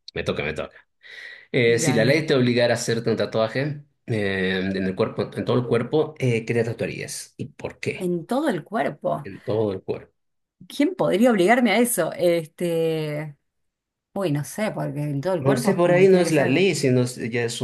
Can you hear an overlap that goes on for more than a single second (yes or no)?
yes